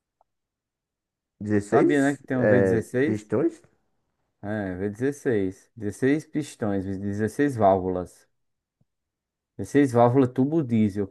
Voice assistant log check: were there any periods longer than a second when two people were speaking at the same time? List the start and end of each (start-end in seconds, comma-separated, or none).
1.7-3.3